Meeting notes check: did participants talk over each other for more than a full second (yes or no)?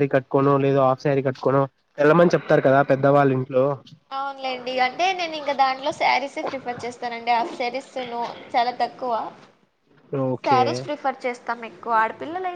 no